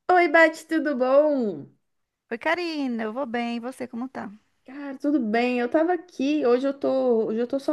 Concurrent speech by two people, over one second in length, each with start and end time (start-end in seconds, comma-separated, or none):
none